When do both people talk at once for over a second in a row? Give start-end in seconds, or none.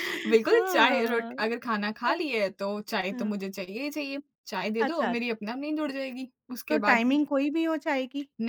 0.5-1.7